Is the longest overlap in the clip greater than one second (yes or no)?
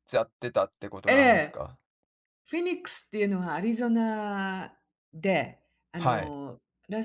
no